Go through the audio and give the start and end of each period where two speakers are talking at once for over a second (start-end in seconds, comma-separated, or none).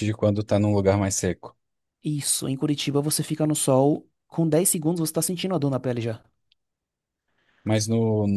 none